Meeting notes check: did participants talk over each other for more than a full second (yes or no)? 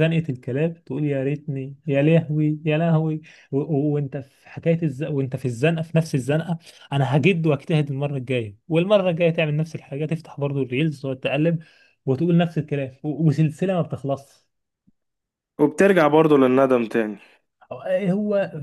no